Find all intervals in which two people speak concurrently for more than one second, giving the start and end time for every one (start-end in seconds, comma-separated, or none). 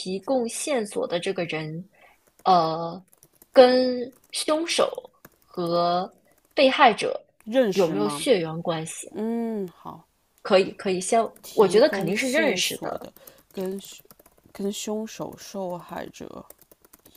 11.4-13.1